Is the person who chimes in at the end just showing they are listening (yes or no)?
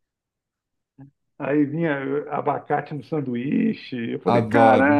no